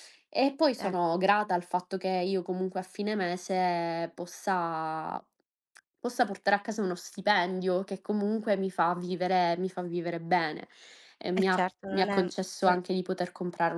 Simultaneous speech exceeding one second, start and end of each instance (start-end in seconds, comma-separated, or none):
11.3-12.8